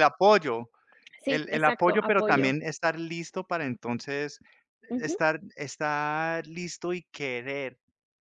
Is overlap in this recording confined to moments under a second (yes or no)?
no